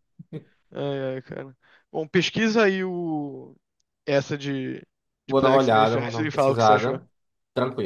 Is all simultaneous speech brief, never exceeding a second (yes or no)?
no